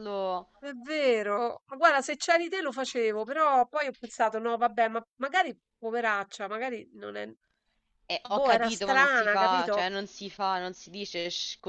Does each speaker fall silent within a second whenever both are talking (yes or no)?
no